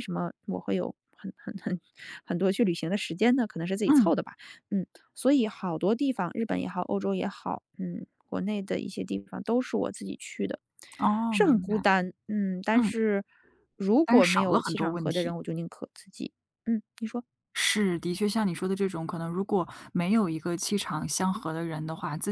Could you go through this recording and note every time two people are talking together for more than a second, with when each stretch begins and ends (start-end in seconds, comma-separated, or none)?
14.0-15.3